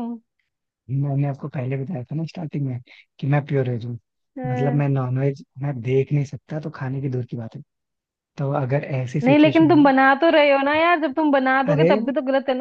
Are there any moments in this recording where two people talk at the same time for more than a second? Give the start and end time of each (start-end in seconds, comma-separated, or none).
none